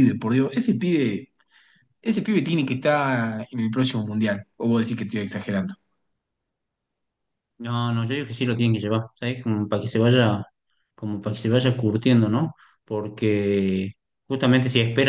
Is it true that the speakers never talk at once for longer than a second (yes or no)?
yes